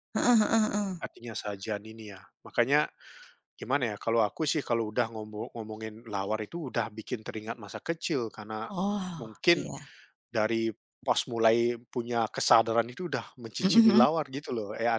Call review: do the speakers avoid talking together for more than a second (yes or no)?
yes